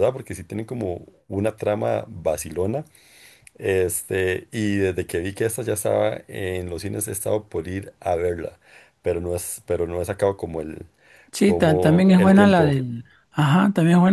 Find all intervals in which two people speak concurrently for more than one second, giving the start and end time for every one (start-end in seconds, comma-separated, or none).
11.4-12.8